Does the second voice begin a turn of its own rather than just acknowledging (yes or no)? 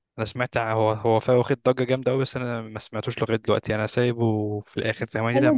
yes